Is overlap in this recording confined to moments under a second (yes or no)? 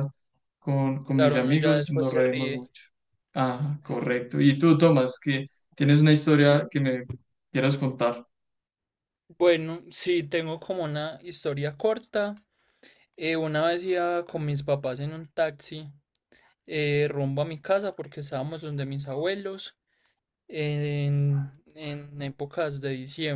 no